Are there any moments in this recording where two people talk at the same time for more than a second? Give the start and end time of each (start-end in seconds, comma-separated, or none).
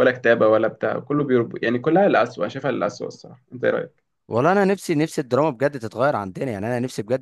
none